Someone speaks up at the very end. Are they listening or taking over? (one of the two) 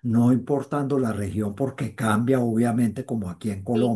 listening